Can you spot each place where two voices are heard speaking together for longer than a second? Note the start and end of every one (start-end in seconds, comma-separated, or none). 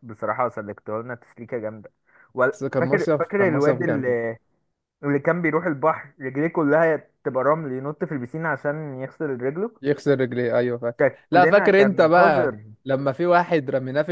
2.7-4.1, 11.0-12.6